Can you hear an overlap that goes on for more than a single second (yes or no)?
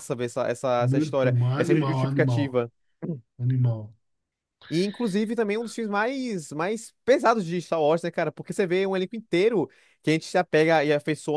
yes